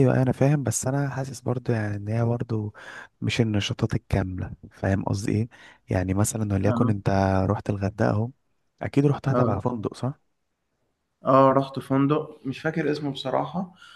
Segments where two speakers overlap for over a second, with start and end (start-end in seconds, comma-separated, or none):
none